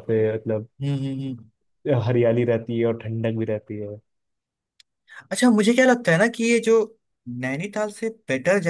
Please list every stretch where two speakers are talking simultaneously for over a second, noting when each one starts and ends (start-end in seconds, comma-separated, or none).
none